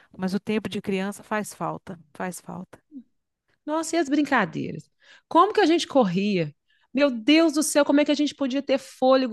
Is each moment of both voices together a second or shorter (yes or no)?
yes